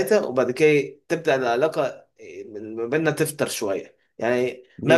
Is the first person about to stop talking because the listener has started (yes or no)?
no